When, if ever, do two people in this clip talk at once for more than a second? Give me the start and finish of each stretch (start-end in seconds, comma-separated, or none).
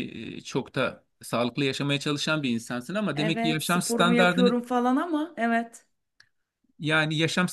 3.1-4.5